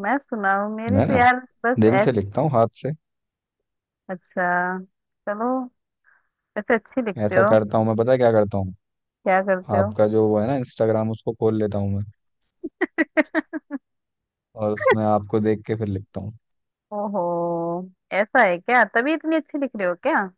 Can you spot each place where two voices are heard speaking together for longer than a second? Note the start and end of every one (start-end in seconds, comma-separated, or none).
none